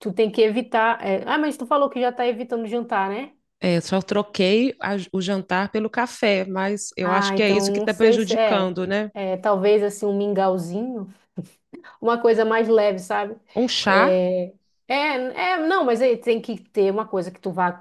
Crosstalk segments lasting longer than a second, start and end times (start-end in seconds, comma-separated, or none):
7.0-8.8